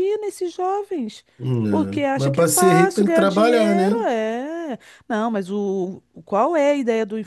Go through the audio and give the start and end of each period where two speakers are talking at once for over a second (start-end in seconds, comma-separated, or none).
1.7-4.1